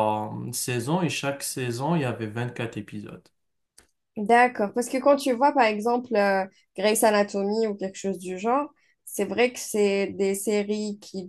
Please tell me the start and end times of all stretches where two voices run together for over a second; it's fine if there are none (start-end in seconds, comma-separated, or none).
none